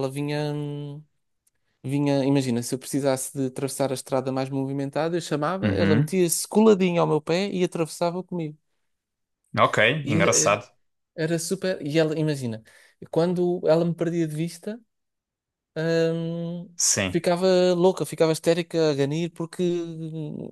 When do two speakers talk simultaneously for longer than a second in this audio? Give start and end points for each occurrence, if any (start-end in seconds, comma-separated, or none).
none